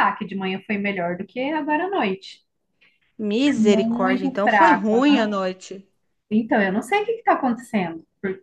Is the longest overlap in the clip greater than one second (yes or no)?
yes